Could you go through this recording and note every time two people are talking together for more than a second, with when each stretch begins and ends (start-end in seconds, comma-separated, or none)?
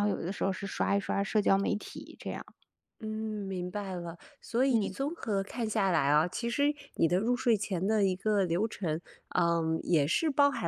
none